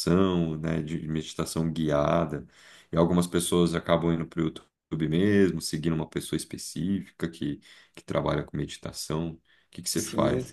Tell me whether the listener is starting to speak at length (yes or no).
yes